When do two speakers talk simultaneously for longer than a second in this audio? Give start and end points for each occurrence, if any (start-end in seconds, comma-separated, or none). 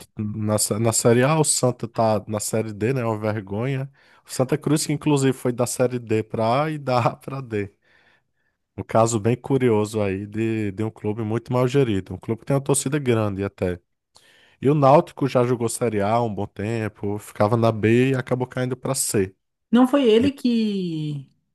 none